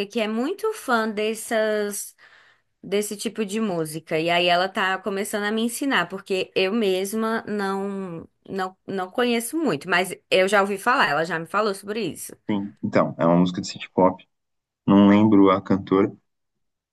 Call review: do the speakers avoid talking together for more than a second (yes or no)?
yes